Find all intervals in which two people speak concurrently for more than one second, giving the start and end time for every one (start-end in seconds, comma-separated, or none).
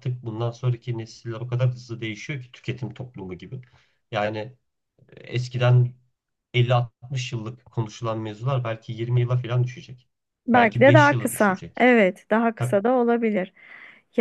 10.5-11.9